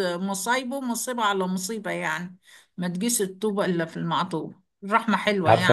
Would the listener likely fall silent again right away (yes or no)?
no